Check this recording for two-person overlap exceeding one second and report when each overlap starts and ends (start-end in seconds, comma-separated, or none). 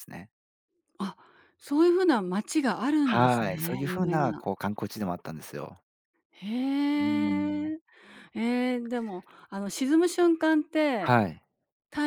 3.0-4.4